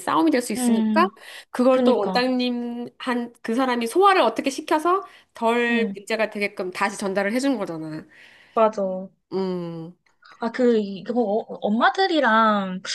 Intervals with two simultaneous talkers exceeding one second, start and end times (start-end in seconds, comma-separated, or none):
none